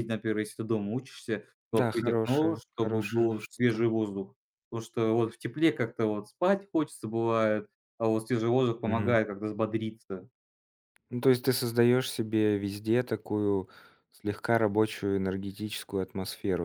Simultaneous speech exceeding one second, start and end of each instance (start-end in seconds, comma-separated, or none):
1.7-3.9